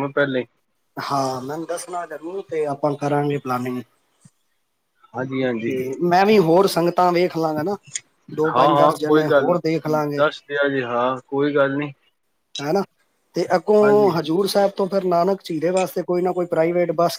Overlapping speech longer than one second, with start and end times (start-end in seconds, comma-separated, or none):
8.5-10.2